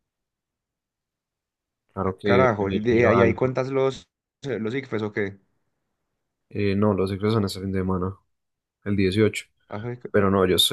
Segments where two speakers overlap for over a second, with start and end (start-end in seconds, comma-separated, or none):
2.0-3.6